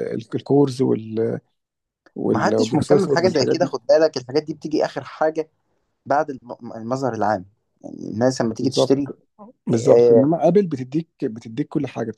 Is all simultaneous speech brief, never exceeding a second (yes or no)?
no